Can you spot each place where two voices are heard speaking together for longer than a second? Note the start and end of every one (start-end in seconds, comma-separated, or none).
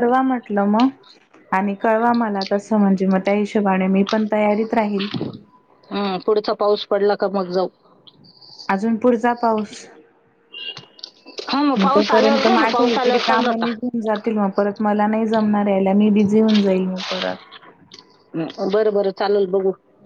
11.8-13.7